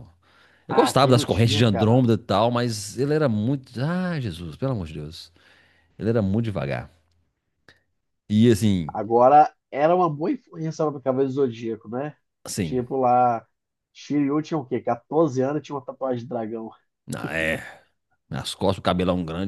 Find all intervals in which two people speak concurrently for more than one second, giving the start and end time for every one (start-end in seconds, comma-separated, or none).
0.7-2.0